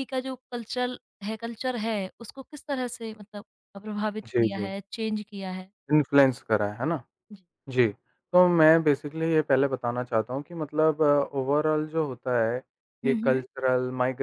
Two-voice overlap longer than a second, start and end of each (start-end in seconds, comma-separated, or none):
none